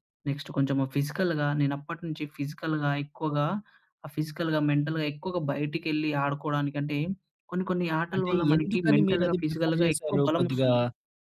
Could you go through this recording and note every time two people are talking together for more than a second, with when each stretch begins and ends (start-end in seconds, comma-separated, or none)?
8.1-10.7